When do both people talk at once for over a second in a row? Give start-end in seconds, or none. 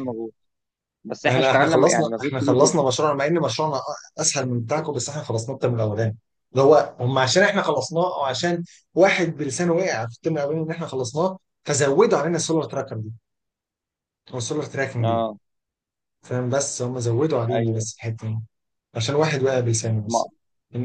1.3-2.8